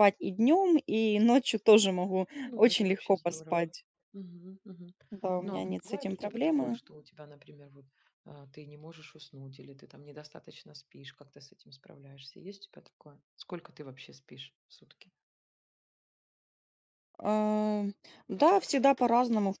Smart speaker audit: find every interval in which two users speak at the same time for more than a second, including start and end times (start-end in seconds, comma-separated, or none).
2.4-3.7, 5.4-6.8